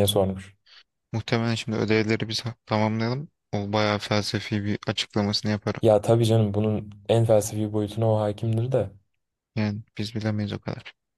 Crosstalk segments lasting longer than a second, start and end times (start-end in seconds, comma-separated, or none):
none